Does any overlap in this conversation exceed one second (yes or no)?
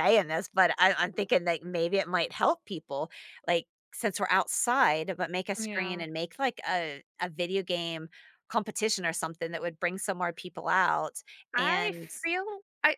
no